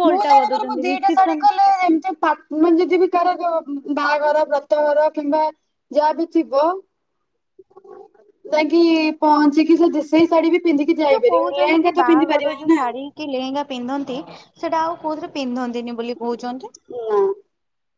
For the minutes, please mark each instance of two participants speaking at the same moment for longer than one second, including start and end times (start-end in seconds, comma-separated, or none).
11.1-12.8